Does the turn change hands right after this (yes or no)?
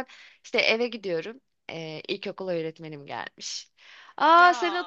no